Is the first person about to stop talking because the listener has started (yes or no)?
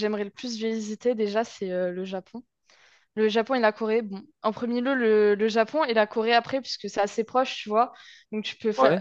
no